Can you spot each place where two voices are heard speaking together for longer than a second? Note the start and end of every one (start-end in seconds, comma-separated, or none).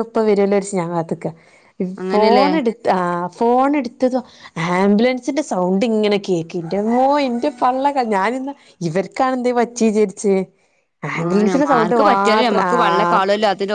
11.2-13.2